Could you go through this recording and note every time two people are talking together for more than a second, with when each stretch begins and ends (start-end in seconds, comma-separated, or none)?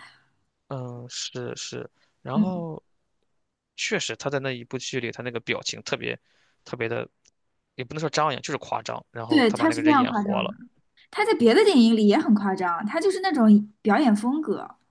9.3-10.6